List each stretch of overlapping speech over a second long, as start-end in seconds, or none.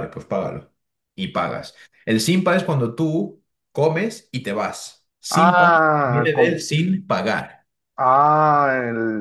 5.3-6.7